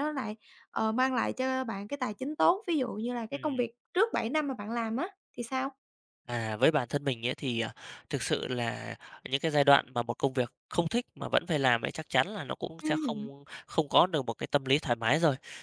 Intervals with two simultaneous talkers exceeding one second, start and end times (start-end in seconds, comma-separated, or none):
none